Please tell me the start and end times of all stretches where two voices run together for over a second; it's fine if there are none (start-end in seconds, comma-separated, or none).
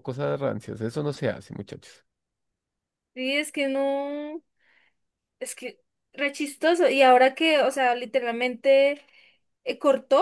none